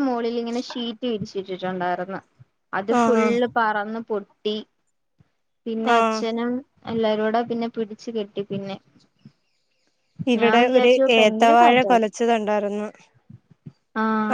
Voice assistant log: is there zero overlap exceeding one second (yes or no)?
no